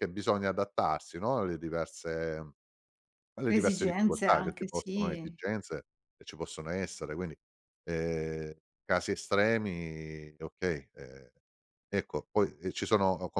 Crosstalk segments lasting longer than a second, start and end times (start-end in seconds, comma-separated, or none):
3.5-5.4